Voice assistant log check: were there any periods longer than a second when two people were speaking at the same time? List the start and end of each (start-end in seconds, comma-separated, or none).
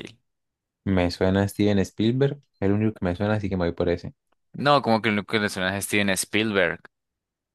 none